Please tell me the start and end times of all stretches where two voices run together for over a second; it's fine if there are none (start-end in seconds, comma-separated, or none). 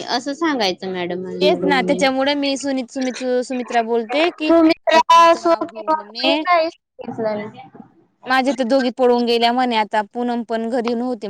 4.5-6.4